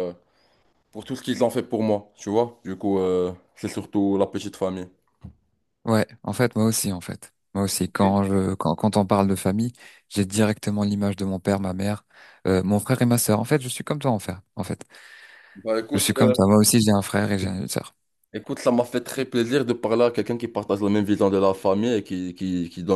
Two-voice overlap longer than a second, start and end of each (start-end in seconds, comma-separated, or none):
none